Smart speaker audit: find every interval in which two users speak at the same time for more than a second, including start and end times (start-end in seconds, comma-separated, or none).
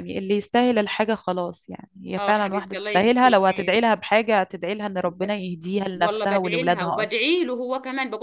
2.2-3.8, 5.9-7.2